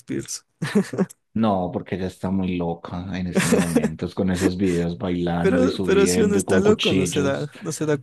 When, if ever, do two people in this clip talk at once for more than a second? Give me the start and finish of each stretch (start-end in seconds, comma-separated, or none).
5.4-7.5